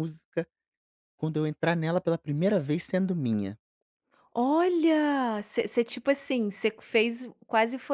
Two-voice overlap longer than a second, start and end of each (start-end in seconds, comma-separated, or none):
none